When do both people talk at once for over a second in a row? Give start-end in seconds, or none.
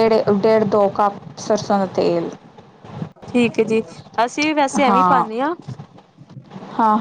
none